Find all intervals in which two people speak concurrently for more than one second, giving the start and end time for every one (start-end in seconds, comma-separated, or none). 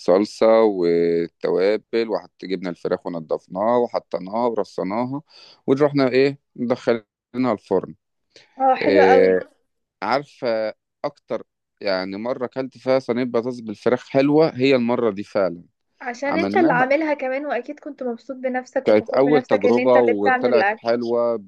18.8-20.8